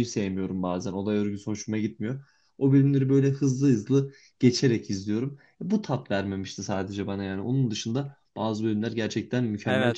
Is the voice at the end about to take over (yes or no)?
yes